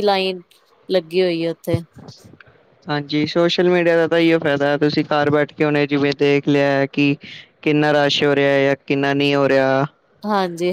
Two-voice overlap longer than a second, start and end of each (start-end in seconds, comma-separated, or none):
none